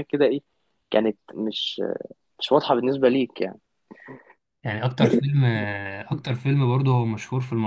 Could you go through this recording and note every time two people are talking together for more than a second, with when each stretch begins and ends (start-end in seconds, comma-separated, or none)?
none